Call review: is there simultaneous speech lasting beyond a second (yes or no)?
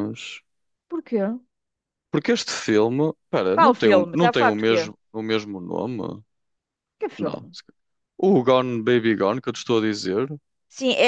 yes